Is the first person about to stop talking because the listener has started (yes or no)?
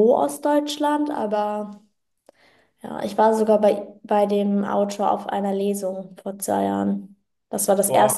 no